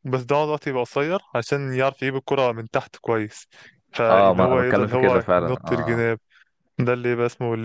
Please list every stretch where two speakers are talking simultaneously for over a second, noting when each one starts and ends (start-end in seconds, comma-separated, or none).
4.1-6.0